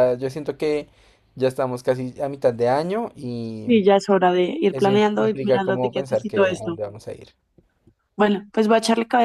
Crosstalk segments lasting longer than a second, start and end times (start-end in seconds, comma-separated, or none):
4.7-6.8